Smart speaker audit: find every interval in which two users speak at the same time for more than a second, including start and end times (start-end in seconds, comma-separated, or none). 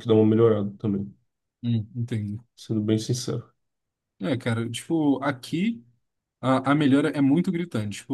none